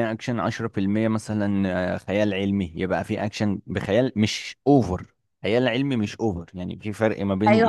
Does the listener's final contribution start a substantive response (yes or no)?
yes